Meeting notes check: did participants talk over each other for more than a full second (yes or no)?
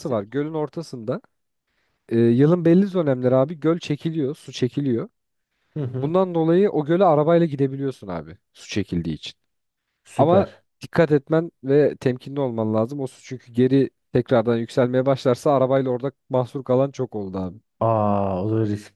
no